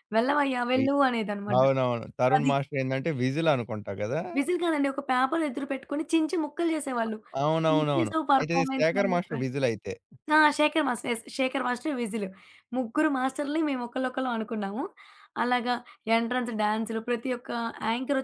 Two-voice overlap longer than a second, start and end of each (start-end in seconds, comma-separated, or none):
7.7-9.4